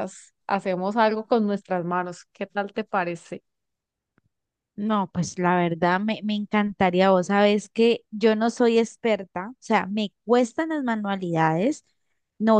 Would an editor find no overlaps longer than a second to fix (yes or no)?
yes